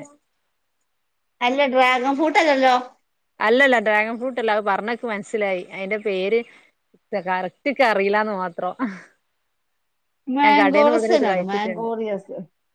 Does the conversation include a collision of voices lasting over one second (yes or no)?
yes